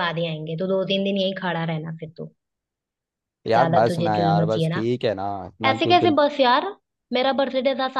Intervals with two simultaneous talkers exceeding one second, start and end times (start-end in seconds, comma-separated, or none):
3.5-4.8